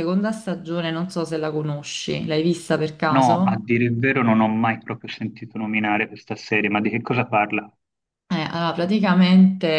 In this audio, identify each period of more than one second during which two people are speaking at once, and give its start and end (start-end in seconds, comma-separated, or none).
none